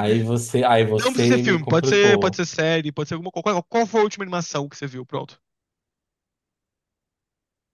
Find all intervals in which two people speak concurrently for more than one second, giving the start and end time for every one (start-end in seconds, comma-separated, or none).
1.0-2.4